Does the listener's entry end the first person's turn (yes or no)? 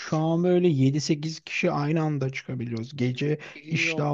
no